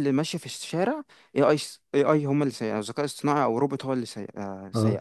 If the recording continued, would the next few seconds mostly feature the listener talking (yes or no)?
no